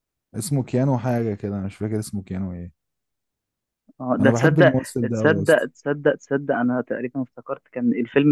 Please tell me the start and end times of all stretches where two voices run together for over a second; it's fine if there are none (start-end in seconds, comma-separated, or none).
4.2-5.7